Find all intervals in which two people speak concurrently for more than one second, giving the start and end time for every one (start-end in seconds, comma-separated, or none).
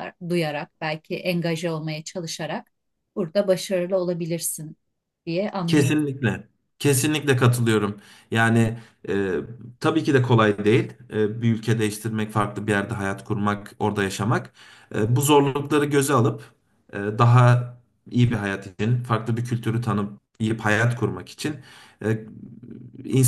none